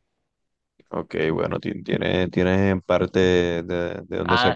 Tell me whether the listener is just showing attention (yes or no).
no